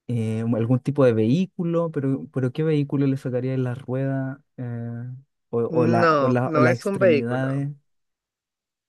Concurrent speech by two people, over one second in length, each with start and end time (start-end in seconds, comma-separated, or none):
5.7-7.6